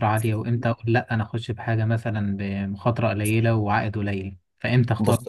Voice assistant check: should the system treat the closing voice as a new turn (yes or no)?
yes